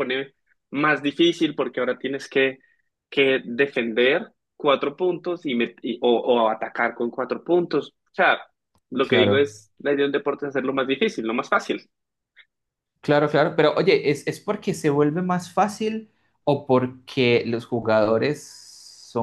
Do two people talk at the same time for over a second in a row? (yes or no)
no